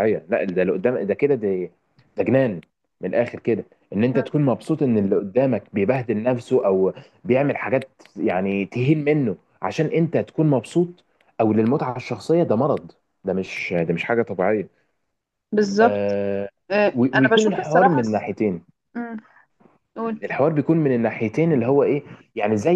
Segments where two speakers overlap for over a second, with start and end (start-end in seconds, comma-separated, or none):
16.9-18.2